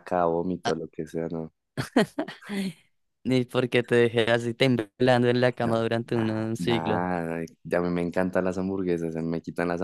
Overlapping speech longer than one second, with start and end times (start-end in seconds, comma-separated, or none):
5.6-7.0